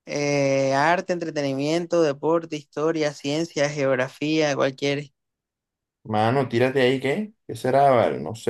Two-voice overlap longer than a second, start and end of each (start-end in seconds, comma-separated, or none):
none